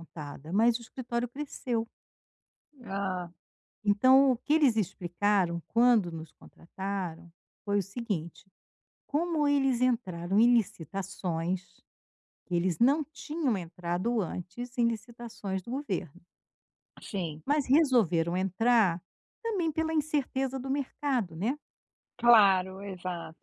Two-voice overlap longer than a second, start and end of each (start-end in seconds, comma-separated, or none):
none